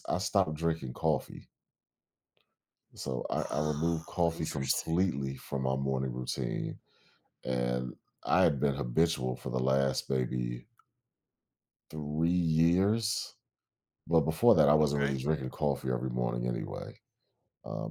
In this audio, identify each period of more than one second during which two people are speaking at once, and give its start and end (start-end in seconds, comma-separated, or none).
3.4-4.9